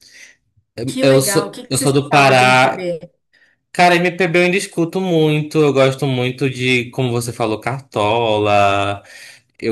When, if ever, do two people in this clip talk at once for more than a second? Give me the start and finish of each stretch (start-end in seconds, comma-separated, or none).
1.0-2.9